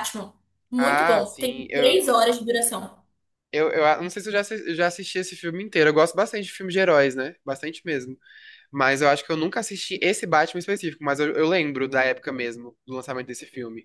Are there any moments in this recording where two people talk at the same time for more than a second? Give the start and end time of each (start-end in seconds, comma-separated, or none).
0.8-2.0